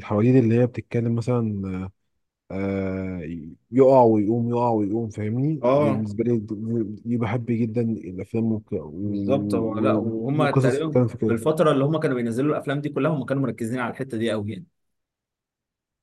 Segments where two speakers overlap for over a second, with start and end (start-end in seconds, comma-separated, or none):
9.3-11.4